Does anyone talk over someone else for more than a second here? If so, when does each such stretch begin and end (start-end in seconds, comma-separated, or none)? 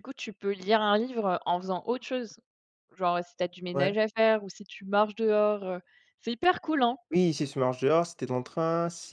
none